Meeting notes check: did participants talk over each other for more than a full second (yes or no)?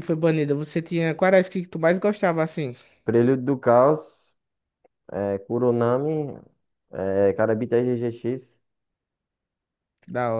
no